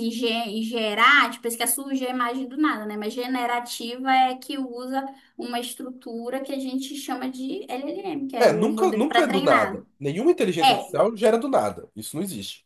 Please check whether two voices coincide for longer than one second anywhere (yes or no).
yes